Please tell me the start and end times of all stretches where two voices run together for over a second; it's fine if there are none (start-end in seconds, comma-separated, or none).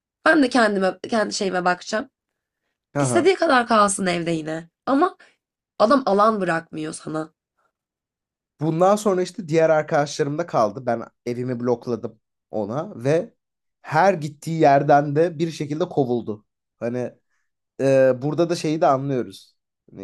none